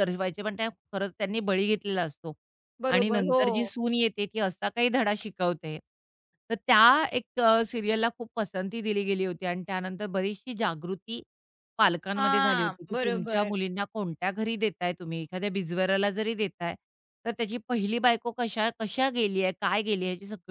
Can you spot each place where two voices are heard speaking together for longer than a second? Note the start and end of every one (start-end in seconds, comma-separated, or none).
12.2-13.5